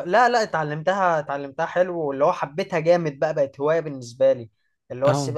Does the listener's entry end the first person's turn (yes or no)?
no